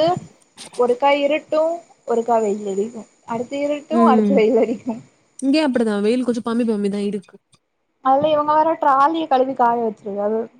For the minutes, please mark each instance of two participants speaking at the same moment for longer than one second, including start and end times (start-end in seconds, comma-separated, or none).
none